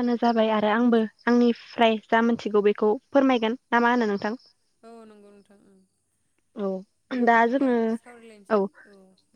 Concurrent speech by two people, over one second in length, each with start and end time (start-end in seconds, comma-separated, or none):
none